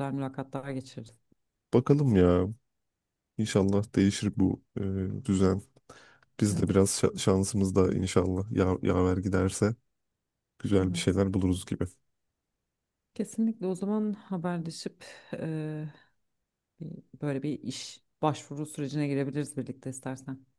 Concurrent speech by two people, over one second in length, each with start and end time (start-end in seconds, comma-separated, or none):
none